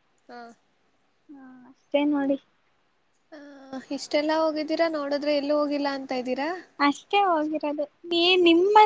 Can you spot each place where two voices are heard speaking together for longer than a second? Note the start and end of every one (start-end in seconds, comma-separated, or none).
none